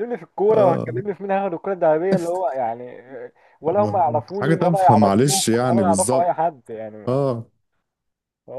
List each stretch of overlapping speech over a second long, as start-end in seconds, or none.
3.8-6.4